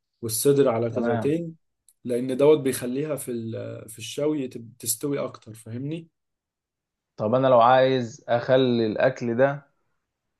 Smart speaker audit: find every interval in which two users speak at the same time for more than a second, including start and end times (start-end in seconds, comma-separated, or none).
none